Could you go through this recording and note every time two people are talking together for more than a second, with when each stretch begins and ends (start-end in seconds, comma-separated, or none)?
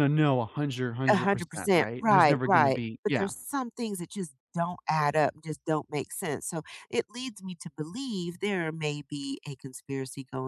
1.1-3.3